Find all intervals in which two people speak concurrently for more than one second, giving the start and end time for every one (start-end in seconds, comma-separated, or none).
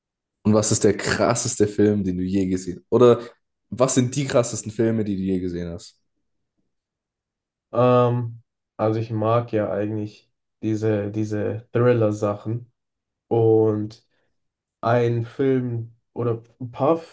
none